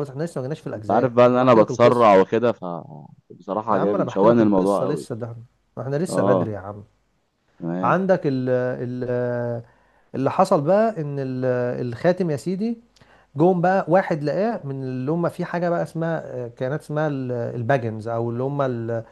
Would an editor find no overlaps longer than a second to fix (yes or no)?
no